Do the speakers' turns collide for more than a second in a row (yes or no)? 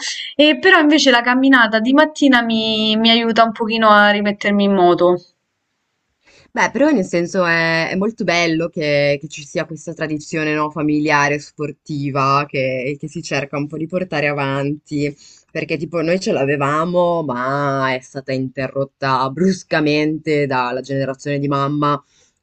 no